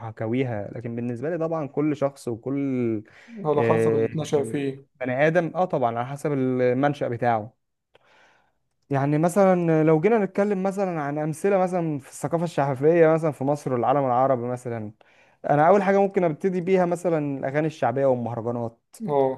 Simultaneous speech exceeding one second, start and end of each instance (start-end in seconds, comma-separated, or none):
none